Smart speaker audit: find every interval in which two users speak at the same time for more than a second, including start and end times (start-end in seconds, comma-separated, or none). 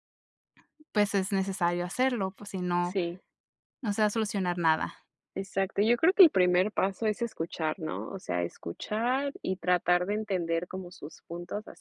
none